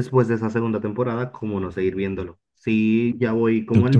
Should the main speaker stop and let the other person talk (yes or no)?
no